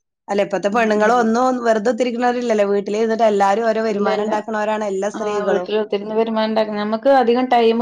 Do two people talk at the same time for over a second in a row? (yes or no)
no